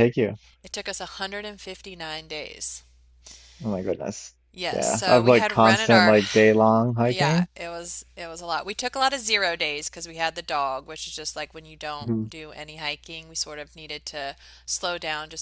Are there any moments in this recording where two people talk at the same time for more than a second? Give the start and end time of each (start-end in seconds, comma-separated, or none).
4.7-6.2